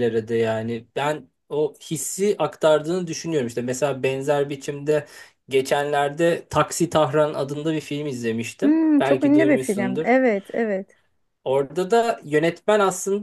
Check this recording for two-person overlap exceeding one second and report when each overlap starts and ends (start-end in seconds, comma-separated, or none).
8.6-10.1